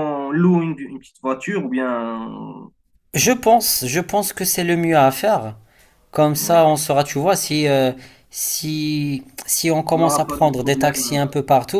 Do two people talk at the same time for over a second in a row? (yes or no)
yes